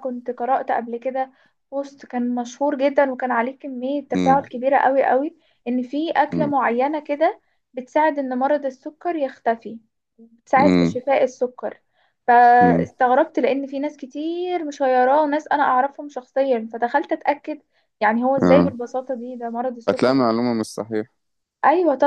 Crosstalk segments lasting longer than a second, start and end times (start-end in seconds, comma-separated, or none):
none